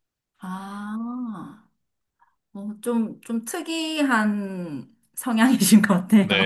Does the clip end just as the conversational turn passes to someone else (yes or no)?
yes